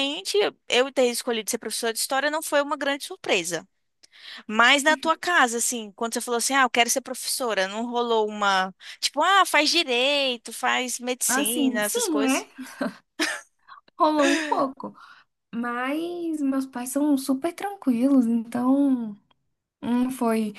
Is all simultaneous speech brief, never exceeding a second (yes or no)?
no